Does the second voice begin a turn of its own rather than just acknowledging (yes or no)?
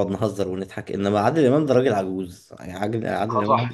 yes